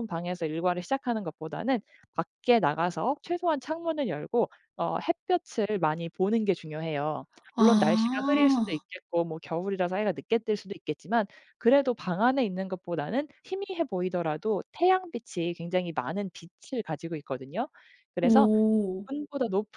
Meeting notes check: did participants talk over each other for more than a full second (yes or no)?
yes